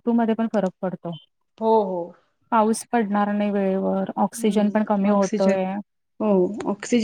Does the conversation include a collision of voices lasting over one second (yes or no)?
yes